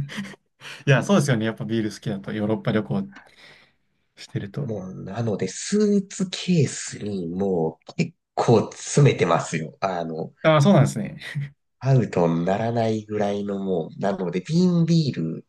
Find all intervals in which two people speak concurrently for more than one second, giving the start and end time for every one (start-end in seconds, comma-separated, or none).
none